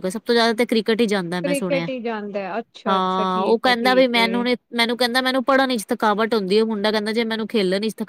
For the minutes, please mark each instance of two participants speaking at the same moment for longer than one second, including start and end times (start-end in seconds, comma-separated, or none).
2.9-4.3